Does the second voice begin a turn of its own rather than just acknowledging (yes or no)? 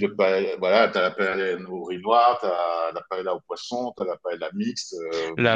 yes